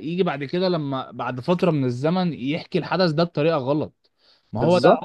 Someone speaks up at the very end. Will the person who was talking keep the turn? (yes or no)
yes